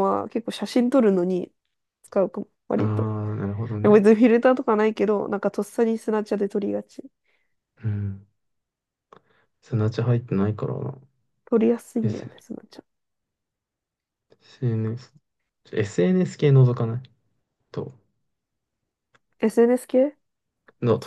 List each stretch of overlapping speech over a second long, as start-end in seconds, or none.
none